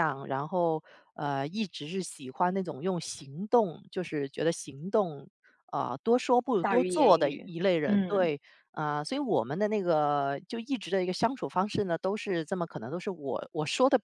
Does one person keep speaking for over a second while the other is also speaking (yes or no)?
yes